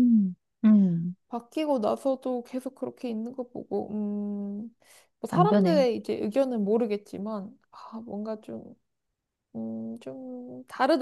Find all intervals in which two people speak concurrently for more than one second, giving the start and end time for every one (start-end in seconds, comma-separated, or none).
none